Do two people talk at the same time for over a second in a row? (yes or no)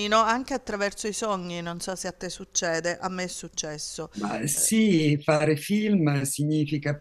no